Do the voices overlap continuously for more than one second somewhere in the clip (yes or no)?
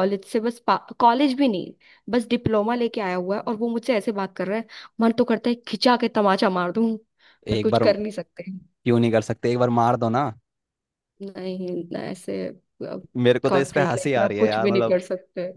yes